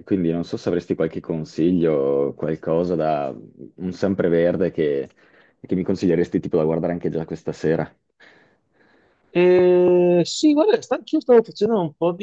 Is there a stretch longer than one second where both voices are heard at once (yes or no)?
no